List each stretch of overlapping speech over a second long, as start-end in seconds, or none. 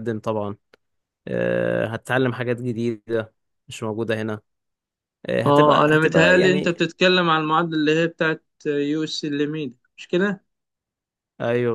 5.5-6.7